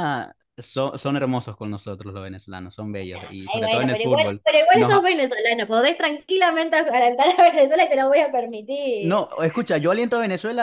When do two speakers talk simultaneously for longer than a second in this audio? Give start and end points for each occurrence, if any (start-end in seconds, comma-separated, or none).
3.1-5.1